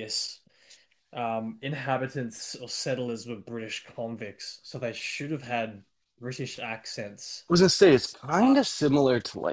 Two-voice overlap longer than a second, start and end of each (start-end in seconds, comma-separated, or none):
none